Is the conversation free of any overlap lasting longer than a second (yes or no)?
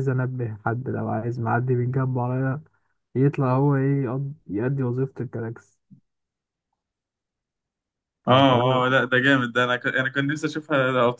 yes